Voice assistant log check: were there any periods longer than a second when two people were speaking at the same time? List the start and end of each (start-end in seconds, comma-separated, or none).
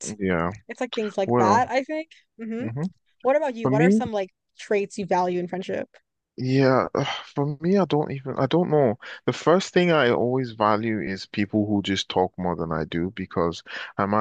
none